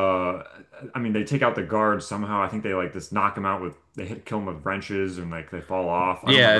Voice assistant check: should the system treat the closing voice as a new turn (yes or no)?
yes